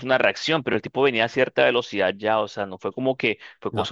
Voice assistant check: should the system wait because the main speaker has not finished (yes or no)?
yes